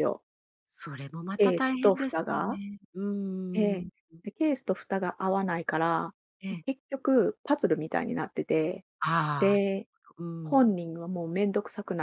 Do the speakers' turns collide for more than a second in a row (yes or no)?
yes